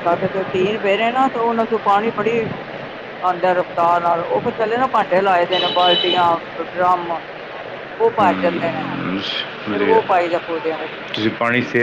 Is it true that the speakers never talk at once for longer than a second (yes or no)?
no